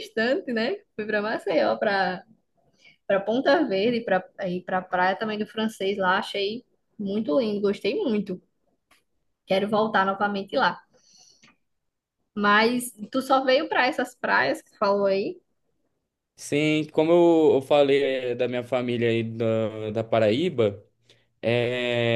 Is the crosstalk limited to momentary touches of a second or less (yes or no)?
yes